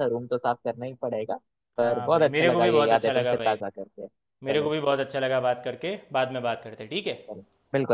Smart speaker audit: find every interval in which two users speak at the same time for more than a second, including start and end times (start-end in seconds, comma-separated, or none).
1.8-3.6